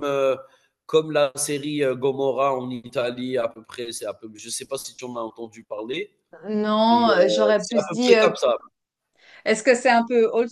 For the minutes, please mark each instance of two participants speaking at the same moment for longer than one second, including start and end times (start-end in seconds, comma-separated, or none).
6.9-8.3